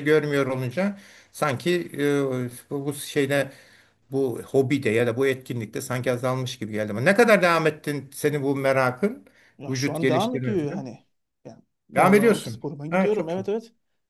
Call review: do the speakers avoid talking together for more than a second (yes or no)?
no